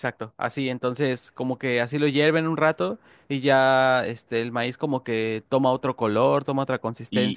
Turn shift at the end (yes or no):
yes